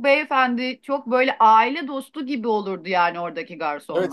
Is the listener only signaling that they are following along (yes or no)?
no